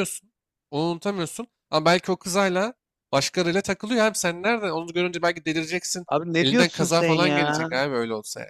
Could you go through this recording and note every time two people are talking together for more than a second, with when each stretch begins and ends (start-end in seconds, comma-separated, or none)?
6.1-7.7